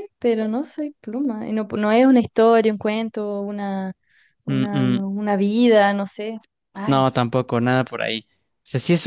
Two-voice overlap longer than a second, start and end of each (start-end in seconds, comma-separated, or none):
none